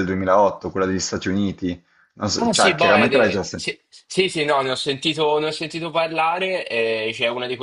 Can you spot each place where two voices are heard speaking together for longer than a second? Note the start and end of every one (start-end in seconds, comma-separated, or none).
2.4-3.7